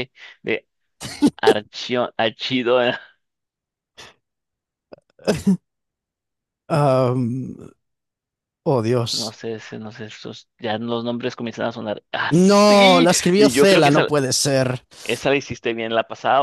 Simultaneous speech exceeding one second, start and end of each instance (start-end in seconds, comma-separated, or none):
12.3-14.1